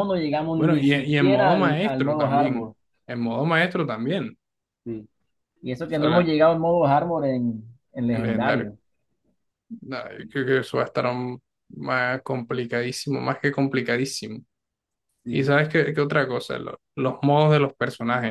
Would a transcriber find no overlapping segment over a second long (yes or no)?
no